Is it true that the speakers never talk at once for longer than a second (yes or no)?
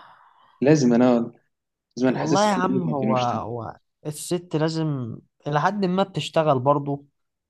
no